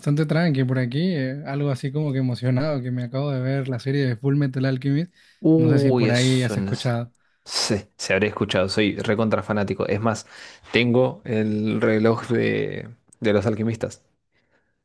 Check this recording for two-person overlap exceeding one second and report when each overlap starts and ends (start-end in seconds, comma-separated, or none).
5.5-6.9